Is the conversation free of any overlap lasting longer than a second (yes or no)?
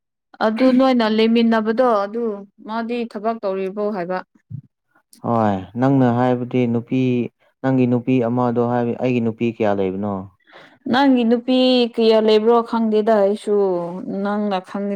yes